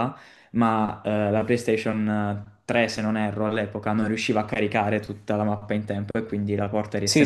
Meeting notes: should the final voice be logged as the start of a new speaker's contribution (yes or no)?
yes